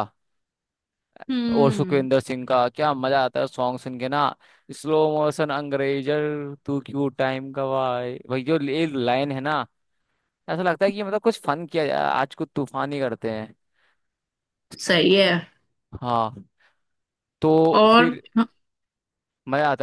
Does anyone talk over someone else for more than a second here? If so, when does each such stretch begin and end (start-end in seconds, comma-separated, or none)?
none